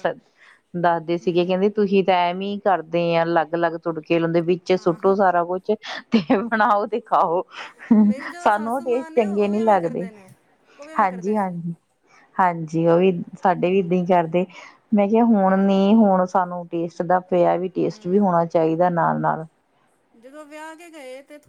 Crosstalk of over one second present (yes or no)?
yes